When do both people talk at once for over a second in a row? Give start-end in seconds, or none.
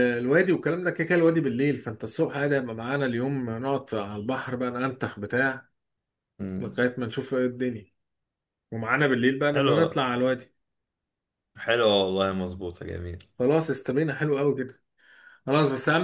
none